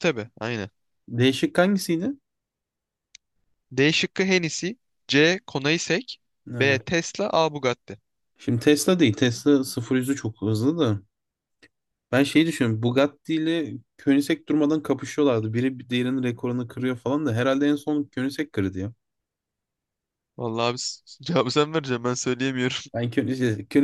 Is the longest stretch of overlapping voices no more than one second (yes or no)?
yes